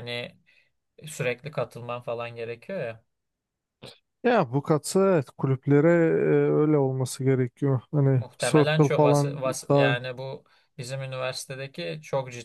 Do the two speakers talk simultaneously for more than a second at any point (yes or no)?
yes